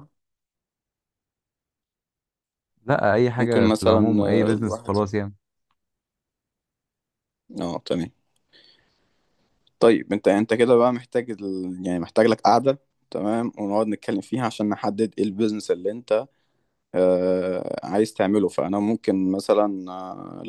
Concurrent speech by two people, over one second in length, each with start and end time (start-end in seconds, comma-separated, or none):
3.4-4.9